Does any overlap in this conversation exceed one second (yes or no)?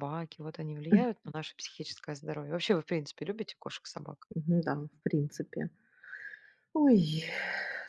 no